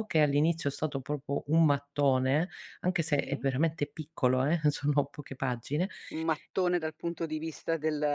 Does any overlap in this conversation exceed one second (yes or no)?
no